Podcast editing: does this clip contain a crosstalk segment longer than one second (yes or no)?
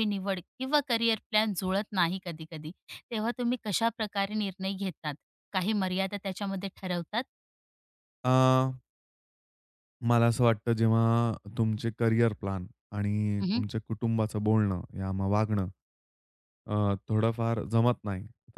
no